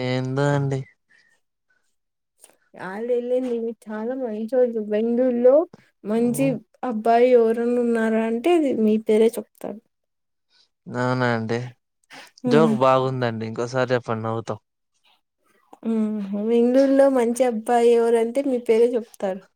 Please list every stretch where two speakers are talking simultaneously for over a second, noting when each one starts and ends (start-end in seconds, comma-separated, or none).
none